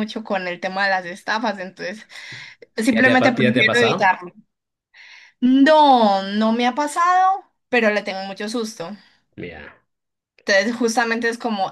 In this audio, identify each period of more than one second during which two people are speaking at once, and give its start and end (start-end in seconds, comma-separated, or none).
2.9-4.2